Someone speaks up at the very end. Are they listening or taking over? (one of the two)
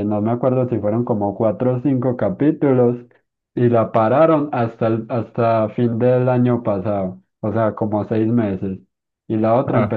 listening